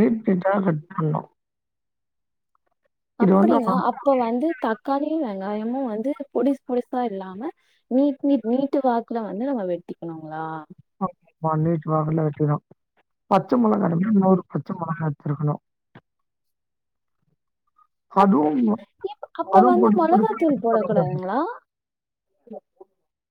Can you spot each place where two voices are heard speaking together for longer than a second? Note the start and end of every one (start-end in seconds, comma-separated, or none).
19.6-21.2